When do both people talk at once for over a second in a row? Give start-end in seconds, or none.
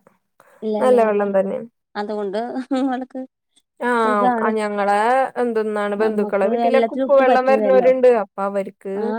6.0-7.9